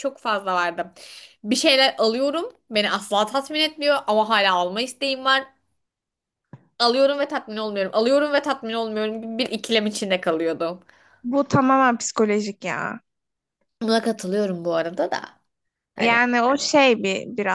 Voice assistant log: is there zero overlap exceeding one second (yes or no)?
yes